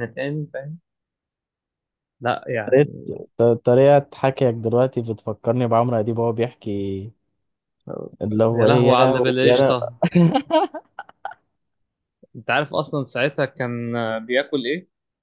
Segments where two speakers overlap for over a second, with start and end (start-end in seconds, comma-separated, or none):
8.5-9.7